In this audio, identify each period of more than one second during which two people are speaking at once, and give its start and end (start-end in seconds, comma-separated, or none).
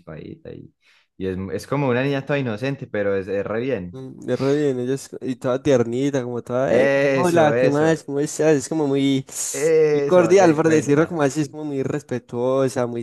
6.7-8.0, 9.9-11.2